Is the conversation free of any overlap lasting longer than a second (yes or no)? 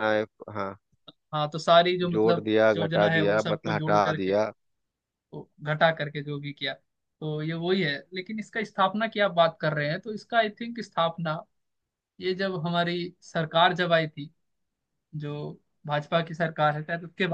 no